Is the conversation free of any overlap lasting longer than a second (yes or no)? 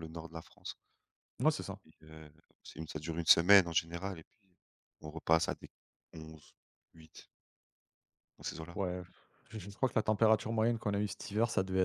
yes